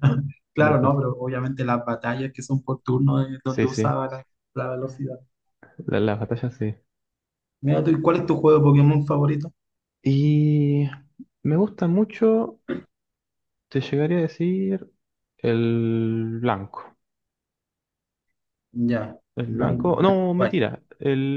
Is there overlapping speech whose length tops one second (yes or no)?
yes